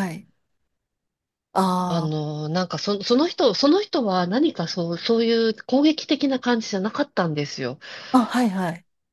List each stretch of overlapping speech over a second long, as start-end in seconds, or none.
none